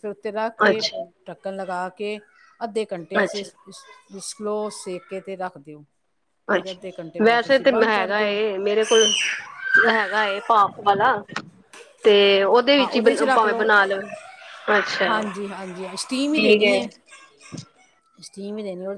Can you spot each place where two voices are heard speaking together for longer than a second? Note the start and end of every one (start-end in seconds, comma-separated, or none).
6.6-8.3